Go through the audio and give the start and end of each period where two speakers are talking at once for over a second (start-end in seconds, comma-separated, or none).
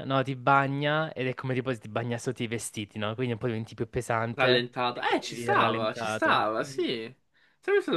4.3-6.8